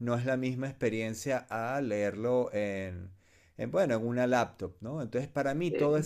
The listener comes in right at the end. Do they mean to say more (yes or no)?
no